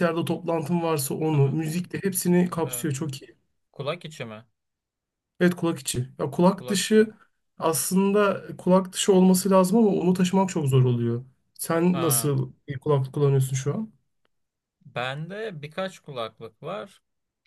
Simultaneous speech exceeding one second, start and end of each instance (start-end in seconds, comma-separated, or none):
none